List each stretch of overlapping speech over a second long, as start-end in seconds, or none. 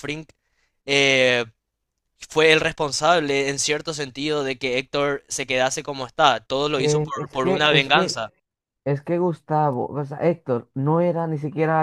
6.7-8.0